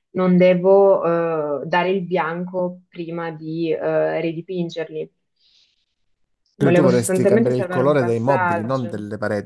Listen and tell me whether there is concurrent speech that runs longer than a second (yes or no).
yes